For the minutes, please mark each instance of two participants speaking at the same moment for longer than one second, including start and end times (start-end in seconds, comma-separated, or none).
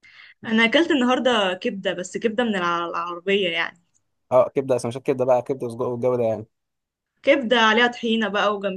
none